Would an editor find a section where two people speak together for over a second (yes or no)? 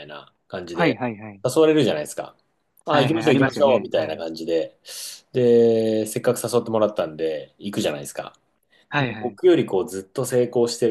yes